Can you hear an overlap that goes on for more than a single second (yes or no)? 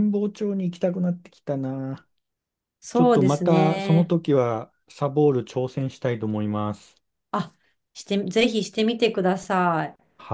yes